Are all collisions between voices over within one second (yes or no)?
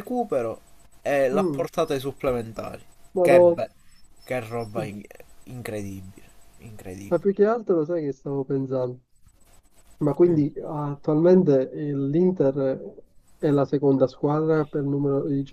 yes